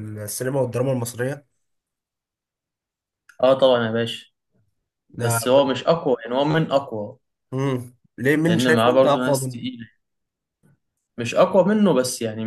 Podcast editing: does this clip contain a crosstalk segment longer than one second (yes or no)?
yes